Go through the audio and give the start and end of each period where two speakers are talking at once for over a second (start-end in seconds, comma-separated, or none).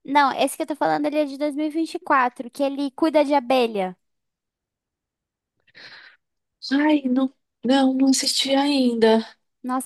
none